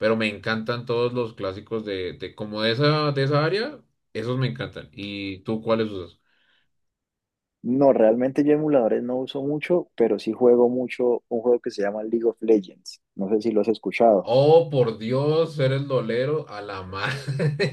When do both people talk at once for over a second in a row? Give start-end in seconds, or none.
none